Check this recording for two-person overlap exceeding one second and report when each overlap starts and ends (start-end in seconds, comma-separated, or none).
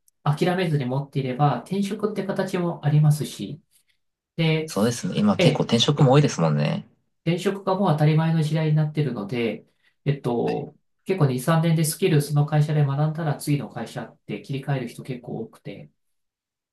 none